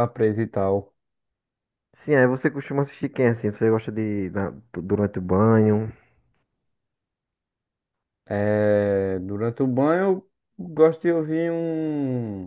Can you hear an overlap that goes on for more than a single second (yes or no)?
no